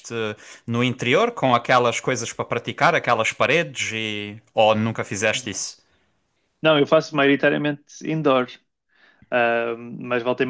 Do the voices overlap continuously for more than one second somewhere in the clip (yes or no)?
no